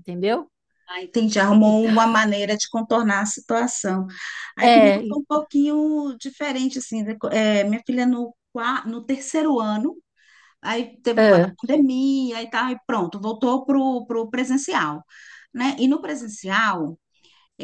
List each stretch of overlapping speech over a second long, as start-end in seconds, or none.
none